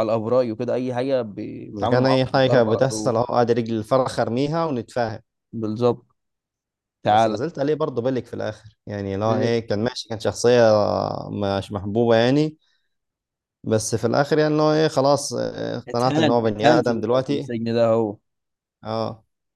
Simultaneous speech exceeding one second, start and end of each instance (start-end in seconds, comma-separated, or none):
1.7-3.1, 15.9-17.5